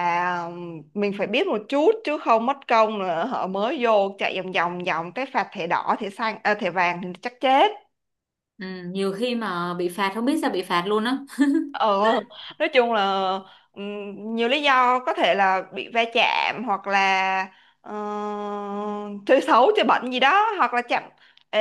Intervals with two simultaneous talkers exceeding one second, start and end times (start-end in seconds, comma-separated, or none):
none